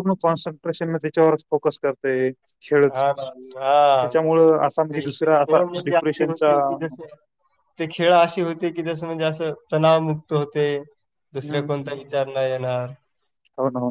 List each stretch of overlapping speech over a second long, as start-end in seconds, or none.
4.9-6.5